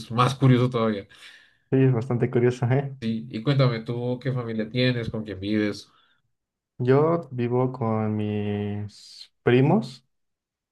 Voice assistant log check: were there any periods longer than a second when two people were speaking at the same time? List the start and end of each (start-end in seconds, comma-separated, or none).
none